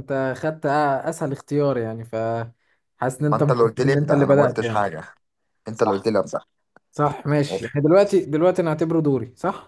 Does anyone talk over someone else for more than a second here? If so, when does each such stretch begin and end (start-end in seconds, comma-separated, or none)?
3.2-4.9